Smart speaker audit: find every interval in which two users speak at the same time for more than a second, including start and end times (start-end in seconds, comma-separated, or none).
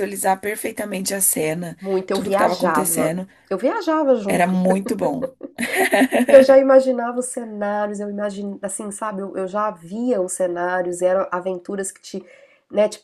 1.8-3.3